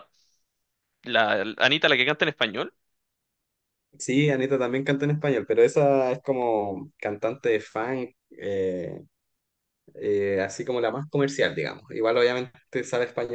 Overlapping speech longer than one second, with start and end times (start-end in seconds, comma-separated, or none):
none